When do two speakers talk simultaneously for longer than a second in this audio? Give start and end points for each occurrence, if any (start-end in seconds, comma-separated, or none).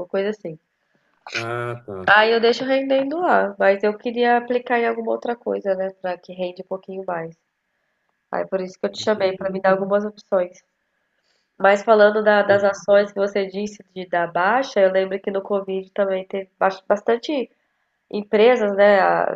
none